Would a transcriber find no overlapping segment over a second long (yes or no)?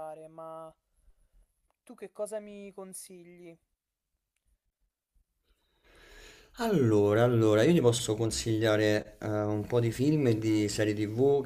yes